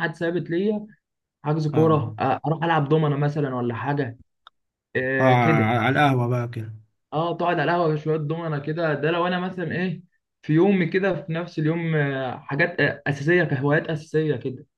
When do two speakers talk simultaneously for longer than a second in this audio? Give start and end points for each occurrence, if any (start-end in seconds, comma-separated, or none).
none